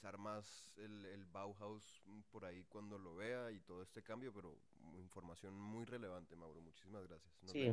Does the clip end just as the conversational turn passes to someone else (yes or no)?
yes